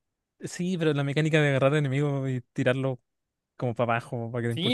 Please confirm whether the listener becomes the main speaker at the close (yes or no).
yes